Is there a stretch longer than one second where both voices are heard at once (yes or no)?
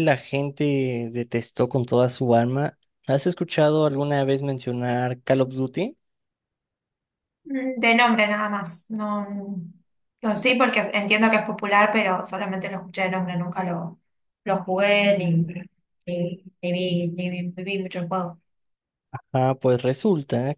no